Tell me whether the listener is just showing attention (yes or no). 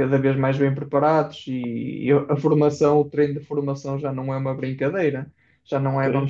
yes